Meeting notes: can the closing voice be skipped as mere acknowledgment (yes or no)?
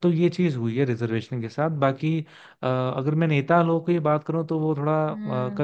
yes